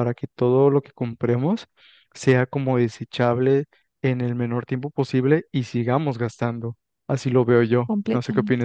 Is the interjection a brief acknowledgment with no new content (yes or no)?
no